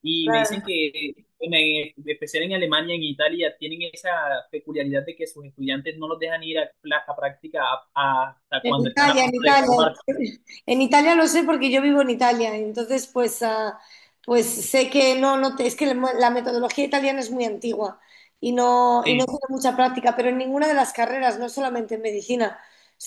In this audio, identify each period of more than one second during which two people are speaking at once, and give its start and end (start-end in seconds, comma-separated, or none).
8.6-9.8